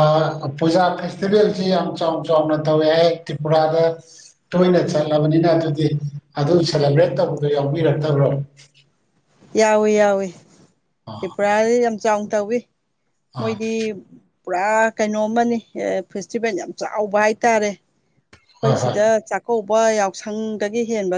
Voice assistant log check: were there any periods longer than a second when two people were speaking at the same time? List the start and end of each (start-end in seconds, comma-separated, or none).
none